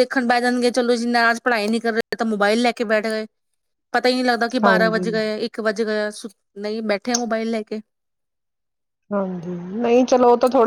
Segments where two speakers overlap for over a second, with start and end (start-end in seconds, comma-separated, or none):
none